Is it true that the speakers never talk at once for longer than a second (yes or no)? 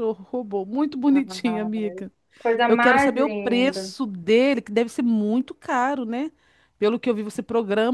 no